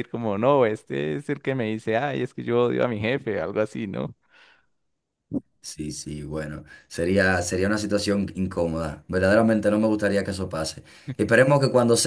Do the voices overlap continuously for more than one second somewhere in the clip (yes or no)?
no